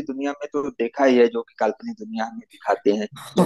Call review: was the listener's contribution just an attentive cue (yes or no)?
no